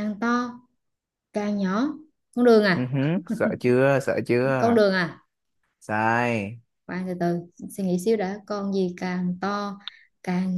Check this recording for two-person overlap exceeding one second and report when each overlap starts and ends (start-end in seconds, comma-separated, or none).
none